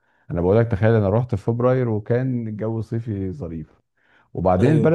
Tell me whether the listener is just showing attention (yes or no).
yes